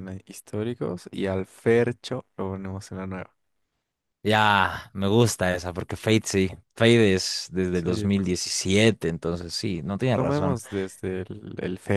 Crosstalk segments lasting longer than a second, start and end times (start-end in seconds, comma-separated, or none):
none